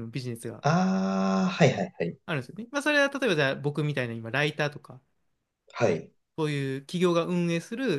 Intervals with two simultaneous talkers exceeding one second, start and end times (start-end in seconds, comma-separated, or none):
none